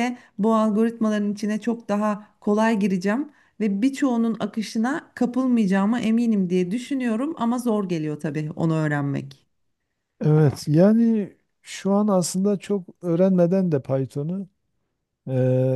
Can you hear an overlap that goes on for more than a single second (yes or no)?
no